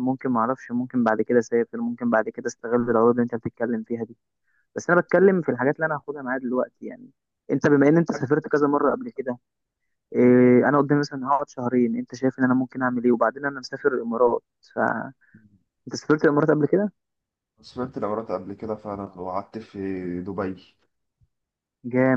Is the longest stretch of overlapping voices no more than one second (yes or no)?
yes